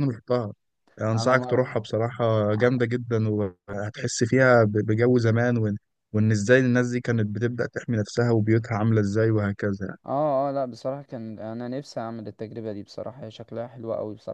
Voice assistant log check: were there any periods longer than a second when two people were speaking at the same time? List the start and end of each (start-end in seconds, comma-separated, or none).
none